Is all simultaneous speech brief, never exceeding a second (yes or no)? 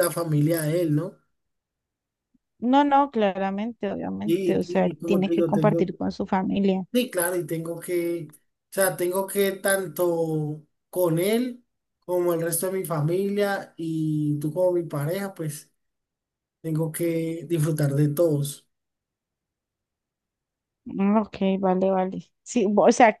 no